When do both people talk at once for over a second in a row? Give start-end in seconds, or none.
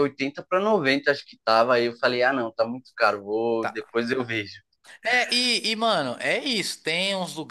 none